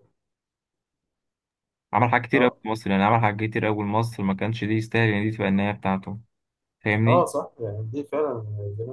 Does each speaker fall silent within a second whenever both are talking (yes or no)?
yes